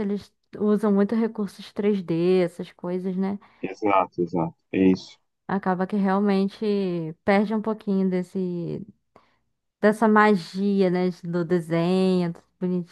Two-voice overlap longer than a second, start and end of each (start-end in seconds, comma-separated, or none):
none